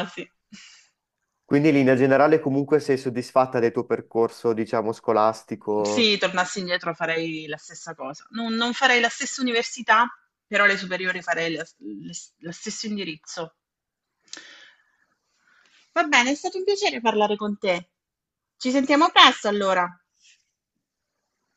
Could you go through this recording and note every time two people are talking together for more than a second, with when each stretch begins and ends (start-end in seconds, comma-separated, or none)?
none